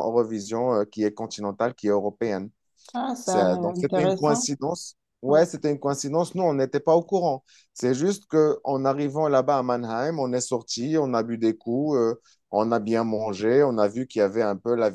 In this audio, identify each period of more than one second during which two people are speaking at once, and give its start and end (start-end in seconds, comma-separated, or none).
3.2-4.5